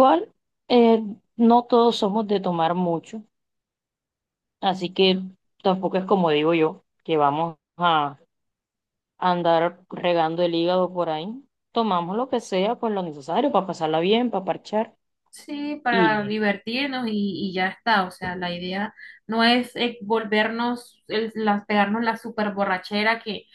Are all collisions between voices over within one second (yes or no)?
yes